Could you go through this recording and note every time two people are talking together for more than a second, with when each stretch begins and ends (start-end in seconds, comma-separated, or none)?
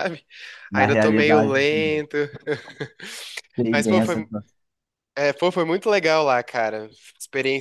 0.7-2.1